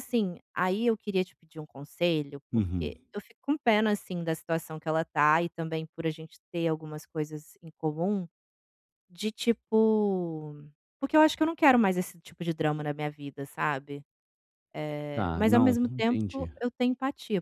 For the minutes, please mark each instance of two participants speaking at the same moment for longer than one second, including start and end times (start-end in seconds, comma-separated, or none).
15.1-16.5